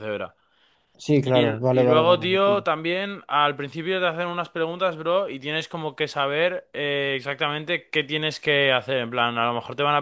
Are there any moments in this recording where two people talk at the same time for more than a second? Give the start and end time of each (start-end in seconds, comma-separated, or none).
1.2-2.6